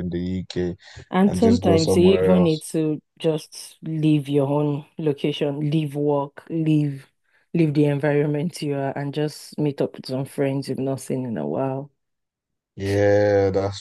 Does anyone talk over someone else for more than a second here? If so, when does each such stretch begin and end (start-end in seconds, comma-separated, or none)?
1.3-2.6